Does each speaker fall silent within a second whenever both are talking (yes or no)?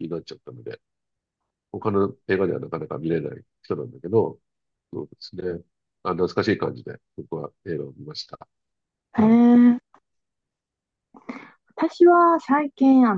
yes